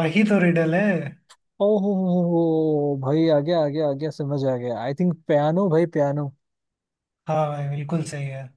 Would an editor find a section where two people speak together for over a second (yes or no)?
no